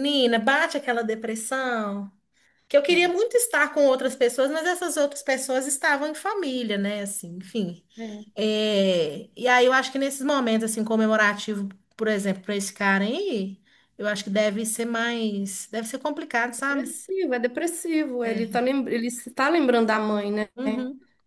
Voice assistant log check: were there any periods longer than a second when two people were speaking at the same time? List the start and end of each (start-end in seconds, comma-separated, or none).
none